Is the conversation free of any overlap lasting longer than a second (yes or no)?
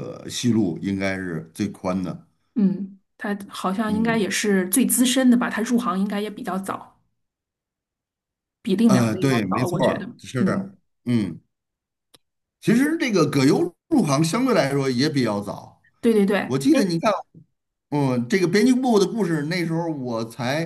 no